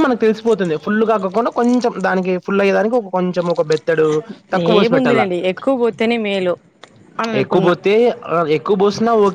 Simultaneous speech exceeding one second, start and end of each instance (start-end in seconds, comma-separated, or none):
none